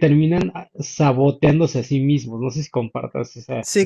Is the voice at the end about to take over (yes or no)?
yes